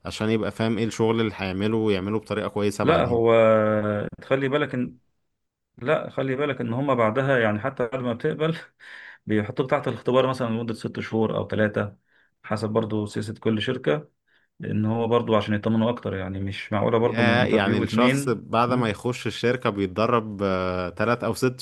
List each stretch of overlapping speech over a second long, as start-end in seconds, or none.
17.0-18.9